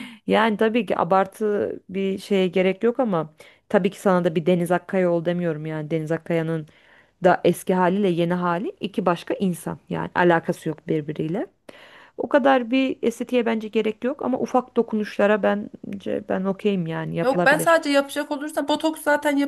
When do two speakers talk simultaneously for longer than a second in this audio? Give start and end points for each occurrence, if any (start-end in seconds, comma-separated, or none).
none